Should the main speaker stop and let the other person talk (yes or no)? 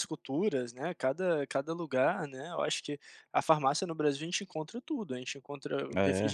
no